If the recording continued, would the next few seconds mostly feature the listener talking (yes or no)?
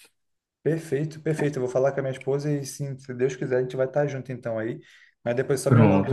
no